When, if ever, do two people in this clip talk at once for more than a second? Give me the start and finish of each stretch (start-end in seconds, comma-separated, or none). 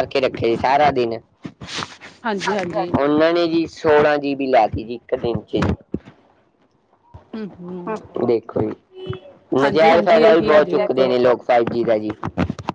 9.6-11.1